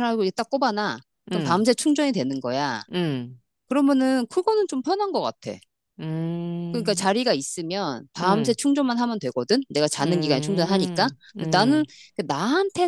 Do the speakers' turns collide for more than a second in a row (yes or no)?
yes